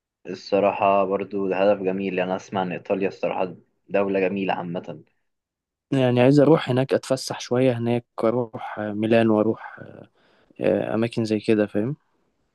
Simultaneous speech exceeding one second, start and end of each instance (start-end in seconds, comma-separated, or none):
none